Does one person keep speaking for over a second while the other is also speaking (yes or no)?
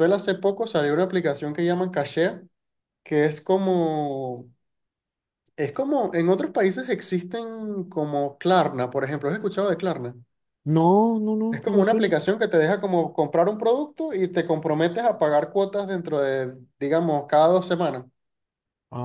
no